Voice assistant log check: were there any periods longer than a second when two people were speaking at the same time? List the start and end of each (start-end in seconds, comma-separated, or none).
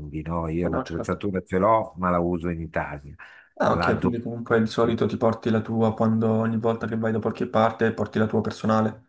none